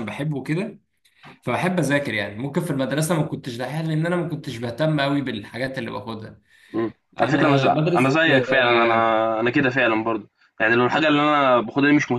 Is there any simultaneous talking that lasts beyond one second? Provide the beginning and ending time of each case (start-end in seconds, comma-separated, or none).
7.2-9.1